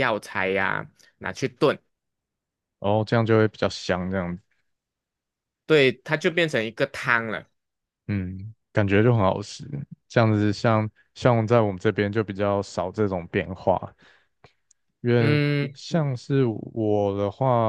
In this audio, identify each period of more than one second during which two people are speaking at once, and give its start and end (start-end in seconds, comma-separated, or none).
none